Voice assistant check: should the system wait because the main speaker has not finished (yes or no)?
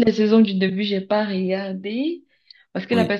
yes